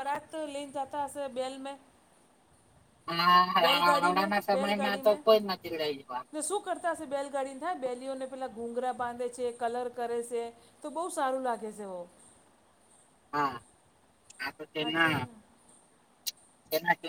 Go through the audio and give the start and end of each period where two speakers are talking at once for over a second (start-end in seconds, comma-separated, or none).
3.6-6.3